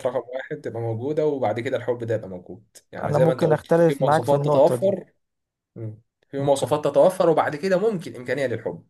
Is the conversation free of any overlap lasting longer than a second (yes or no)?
no